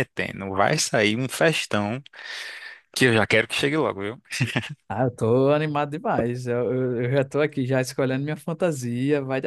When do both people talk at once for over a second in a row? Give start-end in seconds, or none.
none